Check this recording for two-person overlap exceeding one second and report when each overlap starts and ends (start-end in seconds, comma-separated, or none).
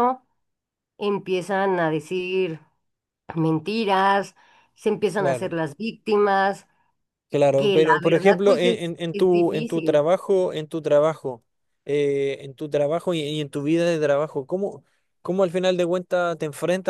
7.5-10.0